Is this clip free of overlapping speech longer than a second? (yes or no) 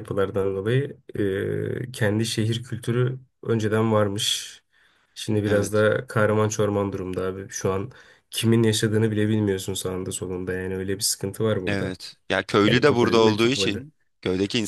no